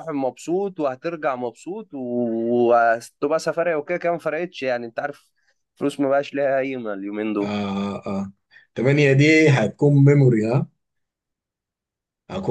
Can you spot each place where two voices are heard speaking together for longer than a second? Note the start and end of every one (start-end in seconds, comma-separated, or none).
none